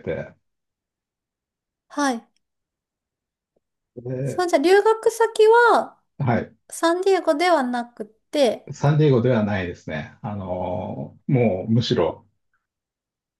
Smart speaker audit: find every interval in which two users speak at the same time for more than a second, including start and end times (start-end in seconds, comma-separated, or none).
none